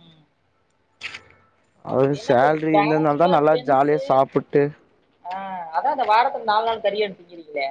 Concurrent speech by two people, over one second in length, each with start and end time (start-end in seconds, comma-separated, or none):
2.2-4.0